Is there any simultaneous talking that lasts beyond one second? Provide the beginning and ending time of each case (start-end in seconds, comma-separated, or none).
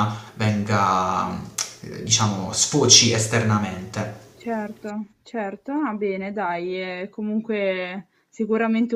none